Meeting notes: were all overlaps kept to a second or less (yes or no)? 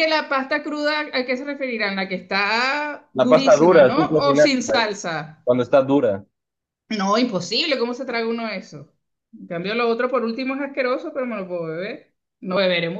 no